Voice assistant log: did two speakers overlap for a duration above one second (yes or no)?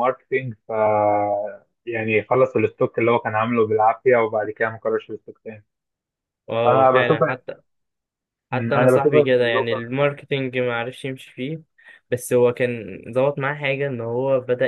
yes